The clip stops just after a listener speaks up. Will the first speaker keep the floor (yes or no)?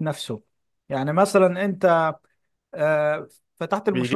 no